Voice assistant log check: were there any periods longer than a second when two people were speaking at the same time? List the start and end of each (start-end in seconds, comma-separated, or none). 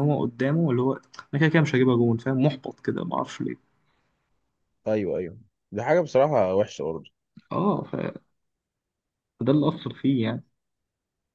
none